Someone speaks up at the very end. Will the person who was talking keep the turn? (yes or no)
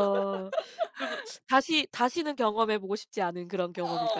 no